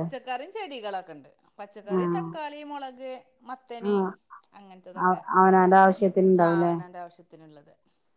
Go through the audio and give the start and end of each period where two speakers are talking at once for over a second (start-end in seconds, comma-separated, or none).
none